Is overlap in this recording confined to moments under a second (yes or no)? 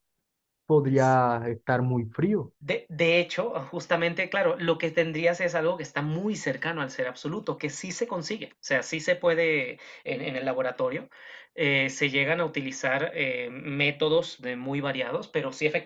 yes